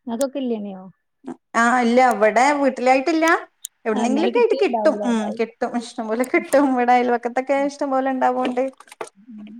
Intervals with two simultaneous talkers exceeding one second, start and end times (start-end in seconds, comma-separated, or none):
4.0-5.5